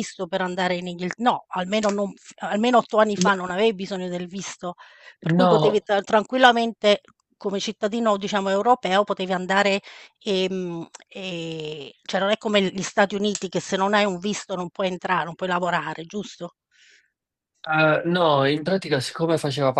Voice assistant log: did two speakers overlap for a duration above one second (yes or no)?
no